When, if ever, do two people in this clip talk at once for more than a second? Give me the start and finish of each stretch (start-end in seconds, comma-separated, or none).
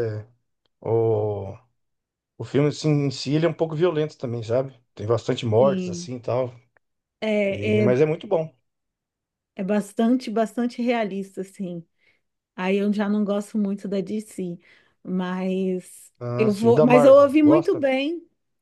16.2-17.8